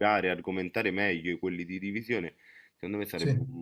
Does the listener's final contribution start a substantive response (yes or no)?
no